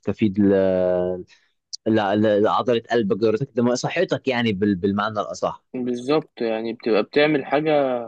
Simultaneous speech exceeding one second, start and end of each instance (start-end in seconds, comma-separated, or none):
none